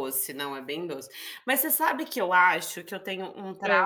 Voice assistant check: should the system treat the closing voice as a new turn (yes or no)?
no